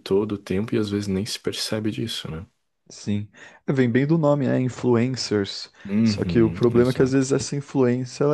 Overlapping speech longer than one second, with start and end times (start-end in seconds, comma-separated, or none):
5.8-7.3